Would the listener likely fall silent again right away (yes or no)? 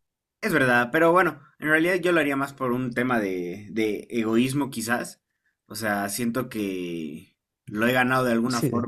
yes